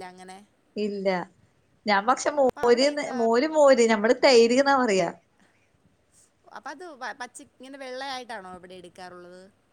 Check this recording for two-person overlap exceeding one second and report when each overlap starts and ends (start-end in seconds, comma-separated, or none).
none